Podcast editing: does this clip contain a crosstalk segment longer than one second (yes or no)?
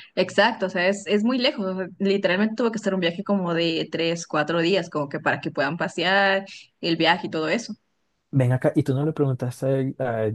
no